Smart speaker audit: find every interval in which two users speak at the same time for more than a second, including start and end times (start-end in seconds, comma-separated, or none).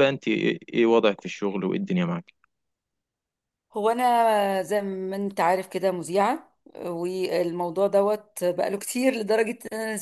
none